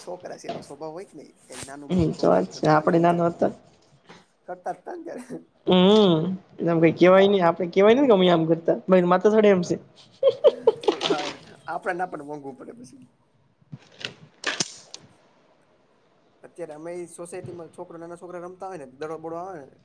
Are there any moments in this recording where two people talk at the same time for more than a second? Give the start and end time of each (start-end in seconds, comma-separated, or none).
1.9-3.5